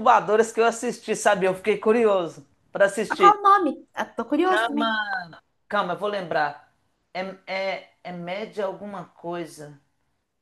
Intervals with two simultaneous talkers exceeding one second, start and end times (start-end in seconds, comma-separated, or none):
none